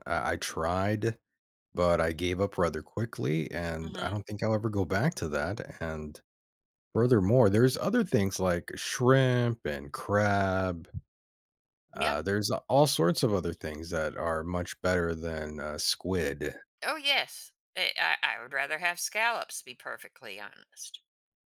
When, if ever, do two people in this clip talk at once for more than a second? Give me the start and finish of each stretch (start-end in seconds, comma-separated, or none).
none